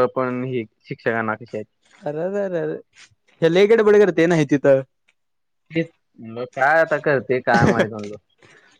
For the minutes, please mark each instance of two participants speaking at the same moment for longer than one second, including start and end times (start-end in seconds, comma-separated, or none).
none